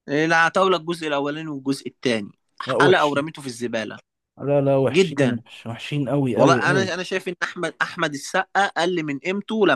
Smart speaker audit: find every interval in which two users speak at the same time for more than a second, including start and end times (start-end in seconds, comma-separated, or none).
none